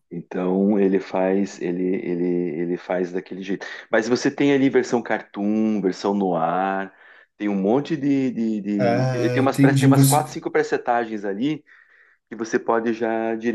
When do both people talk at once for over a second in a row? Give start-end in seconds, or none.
8.8-10.4